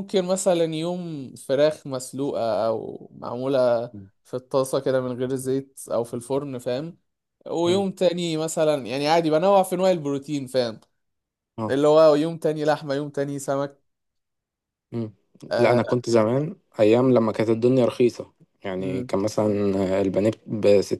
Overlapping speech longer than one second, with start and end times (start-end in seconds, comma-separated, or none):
none